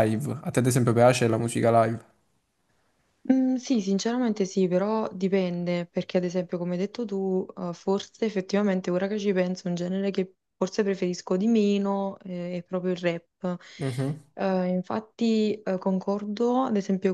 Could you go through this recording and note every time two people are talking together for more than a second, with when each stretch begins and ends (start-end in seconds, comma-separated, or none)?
none